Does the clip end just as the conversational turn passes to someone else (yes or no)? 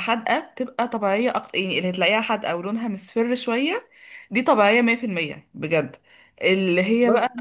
no